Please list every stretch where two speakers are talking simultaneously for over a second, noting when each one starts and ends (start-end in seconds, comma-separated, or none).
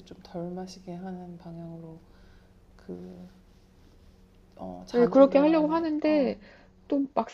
4.9-6.4